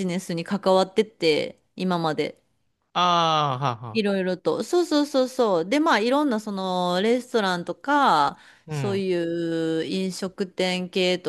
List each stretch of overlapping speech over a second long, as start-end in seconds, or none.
none